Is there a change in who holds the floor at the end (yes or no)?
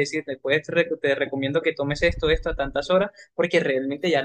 no